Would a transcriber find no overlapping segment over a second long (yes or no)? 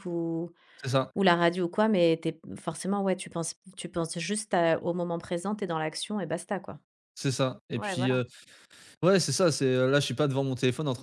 yes